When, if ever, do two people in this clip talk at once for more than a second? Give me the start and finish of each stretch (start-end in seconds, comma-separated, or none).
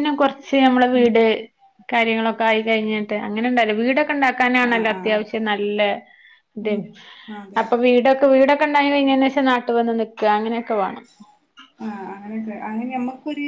none